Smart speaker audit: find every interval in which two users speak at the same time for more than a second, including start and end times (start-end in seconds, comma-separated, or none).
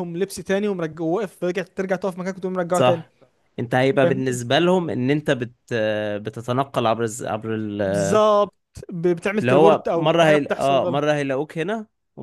9.4-11.0